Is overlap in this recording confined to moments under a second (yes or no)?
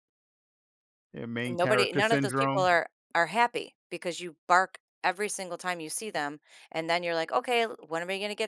no